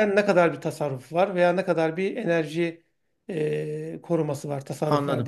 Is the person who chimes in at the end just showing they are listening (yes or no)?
no